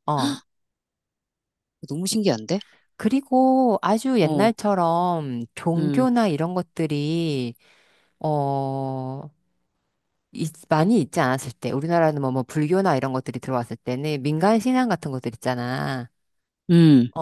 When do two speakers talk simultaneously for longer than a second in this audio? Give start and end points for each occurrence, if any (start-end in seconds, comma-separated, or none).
none